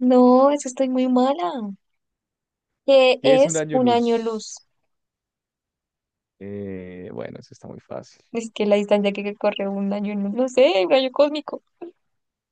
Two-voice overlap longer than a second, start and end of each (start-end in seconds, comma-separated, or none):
3.2-4.5